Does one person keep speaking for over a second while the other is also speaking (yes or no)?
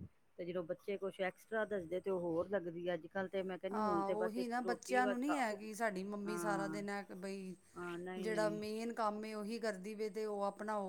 yes